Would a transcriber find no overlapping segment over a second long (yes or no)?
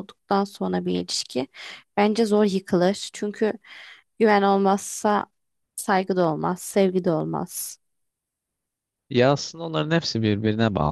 yes